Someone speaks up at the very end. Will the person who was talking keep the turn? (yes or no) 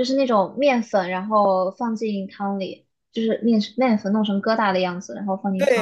no